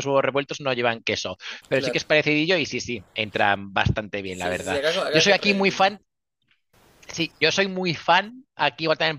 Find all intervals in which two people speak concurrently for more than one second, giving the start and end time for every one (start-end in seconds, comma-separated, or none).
4.3-5.9